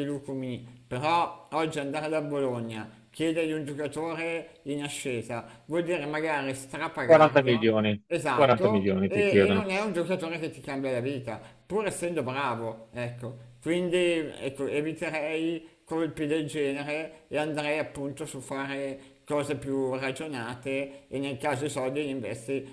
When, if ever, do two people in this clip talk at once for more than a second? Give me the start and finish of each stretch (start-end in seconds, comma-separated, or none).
7.0-9.7